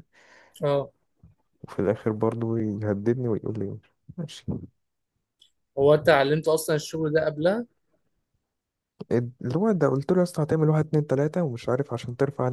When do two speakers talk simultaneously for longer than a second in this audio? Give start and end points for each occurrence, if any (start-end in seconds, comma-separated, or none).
none